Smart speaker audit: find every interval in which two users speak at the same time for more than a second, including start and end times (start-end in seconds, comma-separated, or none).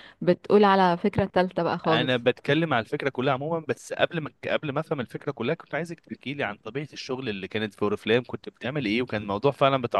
none